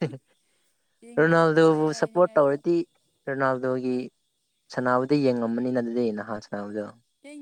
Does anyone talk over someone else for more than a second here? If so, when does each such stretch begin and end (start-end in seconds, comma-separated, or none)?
1.2-2.6